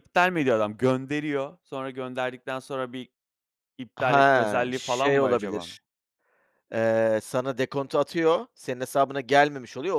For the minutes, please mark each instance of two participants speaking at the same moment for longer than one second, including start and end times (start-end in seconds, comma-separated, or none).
4.0-5.7